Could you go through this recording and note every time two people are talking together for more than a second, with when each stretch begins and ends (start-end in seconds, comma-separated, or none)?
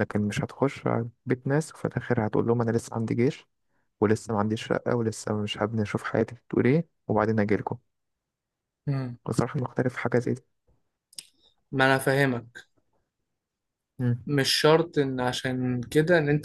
none